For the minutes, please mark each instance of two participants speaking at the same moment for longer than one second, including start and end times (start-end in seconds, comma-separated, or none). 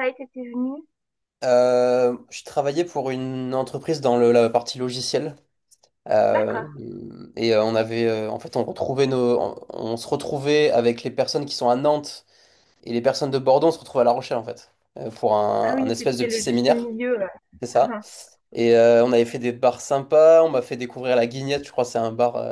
15.6-16.9